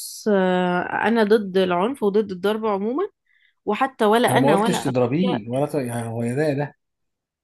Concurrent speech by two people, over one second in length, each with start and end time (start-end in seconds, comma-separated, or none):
4.3-5.6